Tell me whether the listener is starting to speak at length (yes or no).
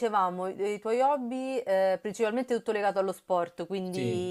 no